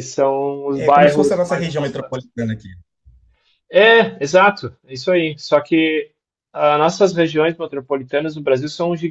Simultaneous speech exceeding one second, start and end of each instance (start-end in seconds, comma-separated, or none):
0.8-2.3